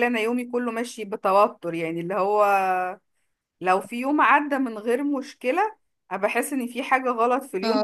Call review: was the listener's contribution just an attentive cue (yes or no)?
yes